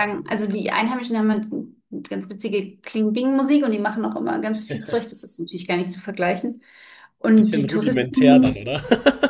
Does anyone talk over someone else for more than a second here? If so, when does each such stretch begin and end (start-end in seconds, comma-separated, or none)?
7.3-8.6